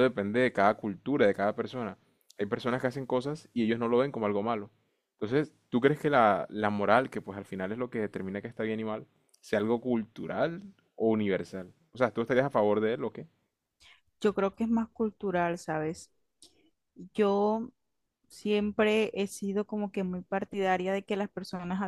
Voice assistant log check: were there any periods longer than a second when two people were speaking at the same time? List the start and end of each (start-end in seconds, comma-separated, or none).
none